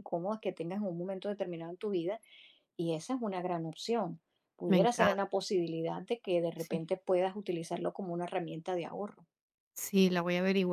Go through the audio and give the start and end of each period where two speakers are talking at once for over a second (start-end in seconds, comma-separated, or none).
none